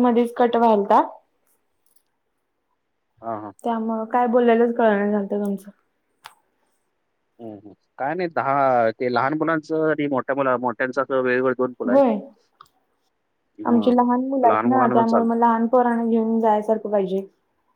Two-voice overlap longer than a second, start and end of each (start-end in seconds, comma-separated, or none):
13.7-15.4